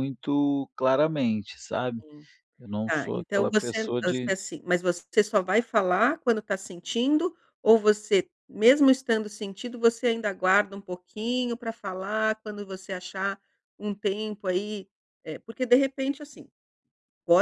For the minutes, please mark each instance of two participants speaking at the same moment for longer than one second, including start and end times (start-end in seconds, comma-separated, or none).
2.9-4.4